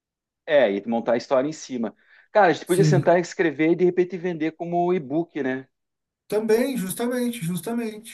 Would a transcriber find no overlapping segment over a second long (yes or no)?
yes